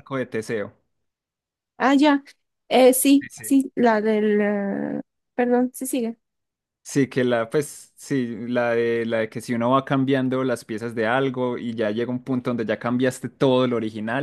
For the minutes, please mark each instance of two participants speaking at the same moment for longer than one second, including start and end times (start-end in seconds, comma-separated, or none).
none